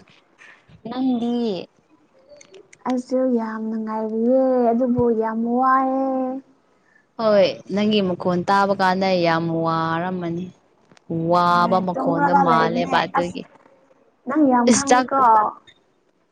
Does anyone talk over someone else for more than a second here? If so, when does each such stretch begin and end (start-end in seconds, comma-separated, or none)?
11.6-13.4